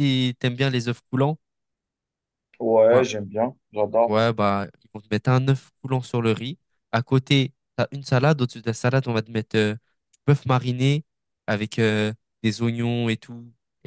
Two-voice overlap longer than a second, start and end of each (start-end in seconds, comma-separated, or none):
none